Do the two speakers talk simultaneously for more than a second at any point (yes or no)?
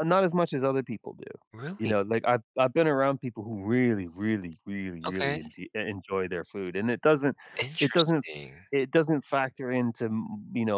no